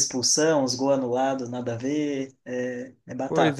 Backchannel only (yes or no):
no